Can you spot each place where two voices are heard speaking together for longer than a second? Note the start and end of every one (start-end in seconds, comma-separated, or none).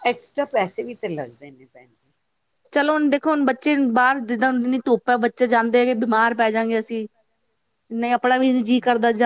none